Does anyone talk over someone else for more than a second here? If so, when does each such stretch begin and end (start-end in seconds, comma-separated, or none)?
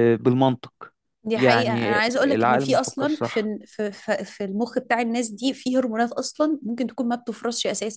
1.4-3.5